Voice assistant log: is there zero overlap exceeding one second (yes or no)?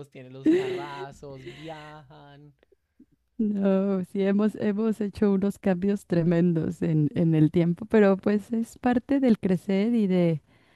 yes